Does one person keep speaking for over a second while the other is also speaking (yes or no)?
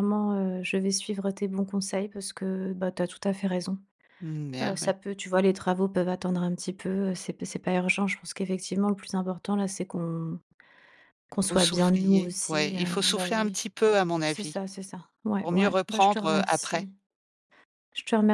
yes